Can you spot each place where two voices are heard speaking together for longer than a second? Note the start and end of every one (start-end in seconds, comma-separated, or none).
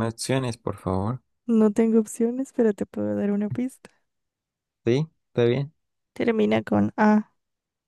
none